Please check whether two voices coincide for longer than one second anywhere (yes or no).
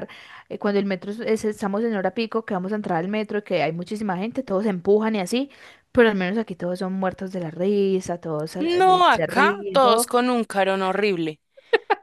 yes